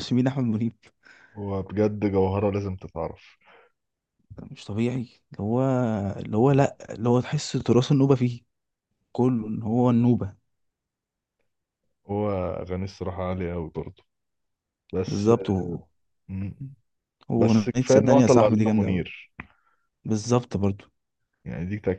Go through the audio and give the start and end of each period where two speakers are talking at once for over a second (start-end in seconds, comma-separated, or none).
17.4-19.1